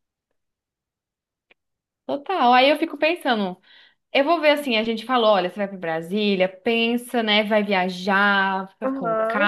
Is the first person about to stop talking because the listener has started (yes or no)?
yes